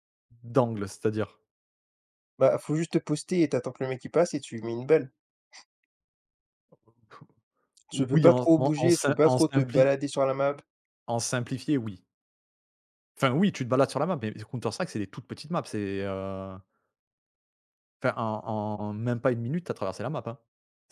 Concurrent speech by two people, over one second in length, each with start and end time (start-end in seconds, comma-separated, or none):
7.9-9.9